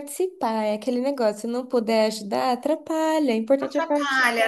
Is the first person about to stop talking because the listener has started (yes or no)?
yes